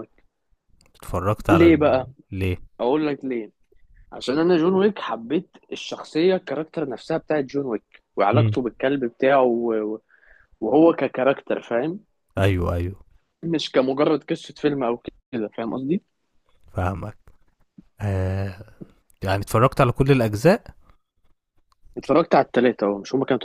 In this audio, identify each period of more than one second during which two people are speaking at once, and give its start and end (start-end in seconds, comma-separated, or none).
none